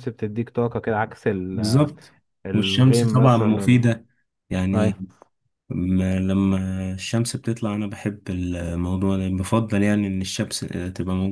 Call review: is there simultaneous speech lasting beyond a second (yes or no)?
yes